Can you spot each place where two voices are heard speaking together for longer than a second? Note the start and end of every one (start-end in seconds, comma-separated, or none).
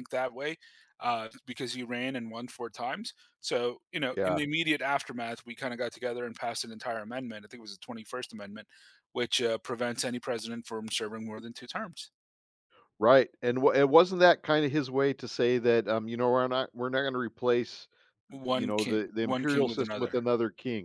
18.5-20.1